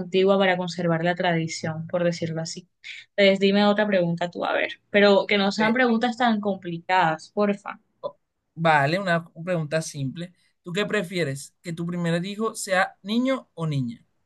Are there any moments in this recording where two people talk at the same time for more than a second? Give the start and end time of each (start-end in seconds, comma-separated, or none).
none